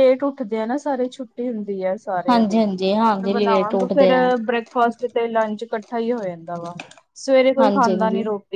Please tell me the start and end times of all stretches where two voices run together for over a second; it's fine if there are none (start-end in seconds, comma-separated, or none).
2.3-4.2